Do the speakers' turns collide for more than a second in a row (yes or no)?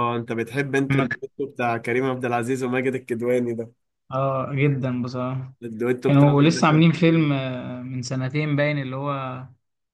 yes